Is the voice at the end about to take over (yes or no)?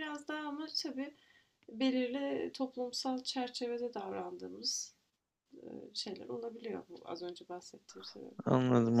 yes